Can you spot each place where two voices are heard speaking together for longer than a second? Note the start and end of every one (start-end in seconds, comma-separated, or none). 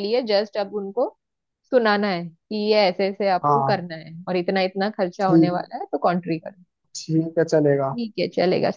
none